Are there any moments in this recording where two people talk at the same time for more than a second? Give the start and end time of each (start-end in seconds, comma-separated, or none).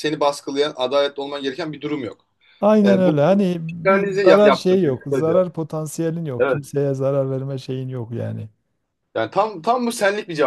3.9-5.5